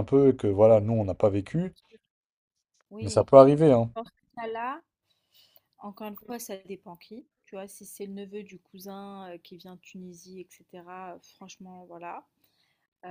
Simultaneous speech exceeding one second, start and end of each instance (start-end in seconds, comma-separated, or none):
none